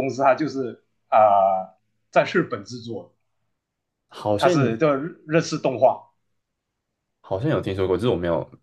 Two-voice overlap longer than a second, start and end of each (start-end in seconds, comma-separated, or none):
none